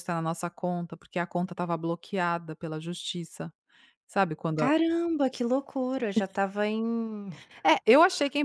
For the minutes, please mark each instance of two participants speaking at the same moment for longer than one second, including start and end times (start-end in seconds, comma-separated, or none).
none